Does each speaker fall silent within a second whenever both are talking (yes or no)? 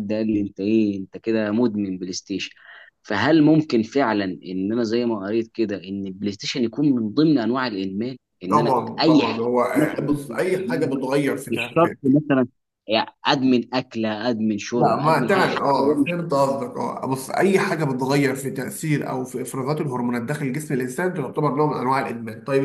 no